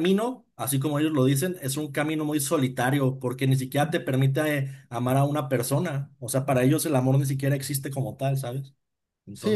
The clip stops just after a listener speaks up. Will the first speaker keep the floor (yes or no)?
no